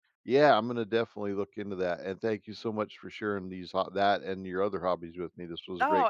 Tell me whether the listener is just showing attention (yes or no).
no